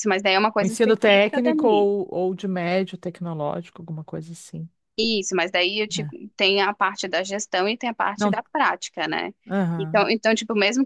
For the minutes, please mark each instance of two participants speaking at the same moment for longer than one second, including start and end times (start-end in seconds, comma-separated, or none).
0.6-1.9